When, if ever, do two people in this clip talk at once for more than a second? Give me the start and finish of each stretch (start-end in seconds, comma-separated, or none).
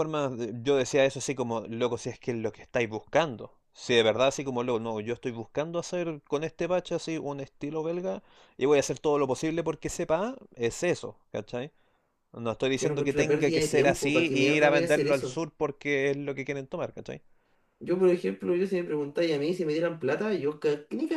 12.7-15.4